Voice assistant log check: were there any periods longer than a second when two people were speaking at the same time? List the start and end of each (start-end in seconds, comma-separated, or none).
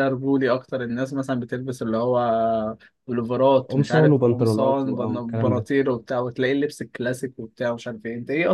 3.7-5.7